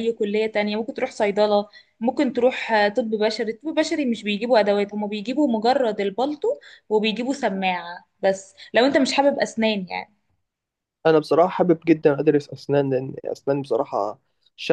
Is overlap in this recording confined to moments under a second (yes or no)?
yes